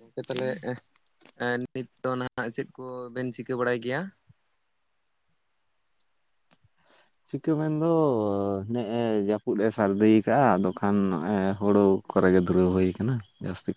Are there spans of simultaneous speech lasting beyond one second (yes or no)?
no